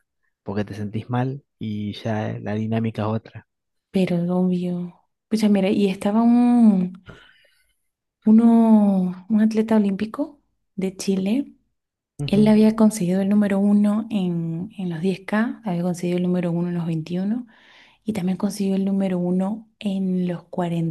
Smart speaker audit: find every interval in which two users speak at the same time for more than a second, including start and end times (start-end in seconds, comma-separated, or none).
none